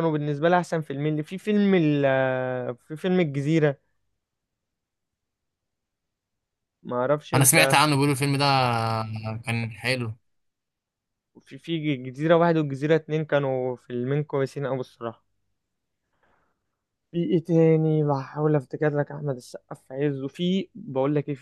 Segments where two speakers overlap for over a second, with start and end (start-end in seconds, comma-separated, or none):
none